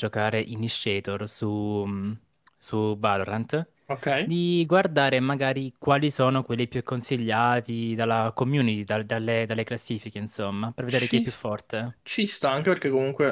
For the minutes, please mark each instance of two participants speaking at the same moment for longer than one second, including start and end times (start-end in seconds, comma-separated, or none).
none